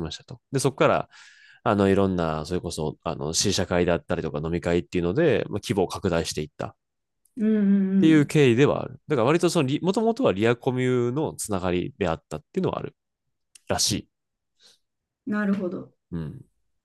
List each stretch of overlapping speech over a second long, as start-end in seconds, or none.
none